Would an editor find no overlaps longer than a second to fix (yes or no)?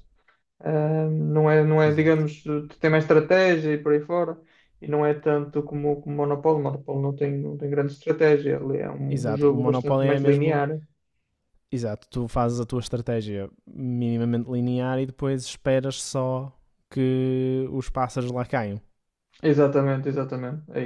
no